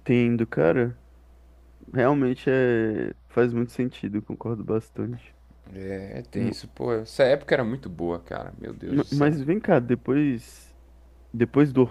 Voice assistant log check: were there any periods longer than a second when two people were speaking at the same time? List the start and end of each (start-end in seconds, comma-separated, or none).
none